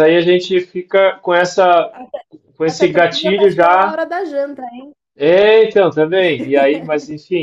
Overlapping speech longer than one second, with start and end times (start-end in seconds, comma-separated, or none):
2.7-4.0